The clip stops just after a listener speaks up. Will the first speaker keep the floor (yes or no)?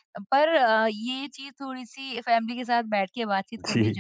yes